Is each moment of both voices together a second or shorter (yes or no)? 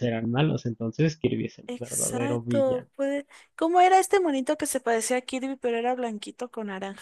no